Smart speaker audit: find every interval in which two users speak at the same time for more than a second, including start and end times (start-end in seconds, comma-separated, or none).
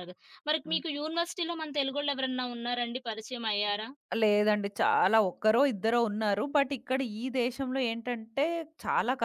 none